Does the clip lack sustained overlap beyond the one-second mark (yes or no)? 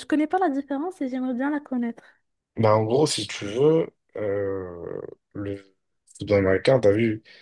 yes